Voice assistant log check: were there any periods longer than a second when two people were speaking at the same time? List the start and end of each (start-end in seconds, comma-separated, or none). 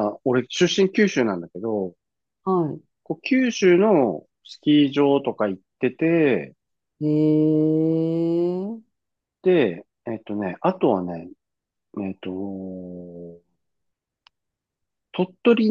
none